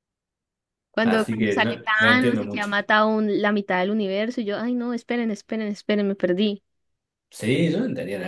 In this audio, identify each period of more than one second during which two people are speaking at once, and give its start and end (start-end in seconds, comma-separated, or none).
1.0-2.7